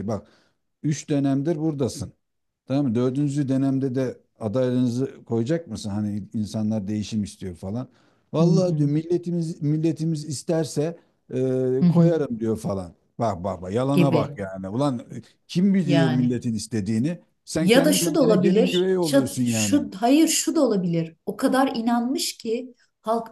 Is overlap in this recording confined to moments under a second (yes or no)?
no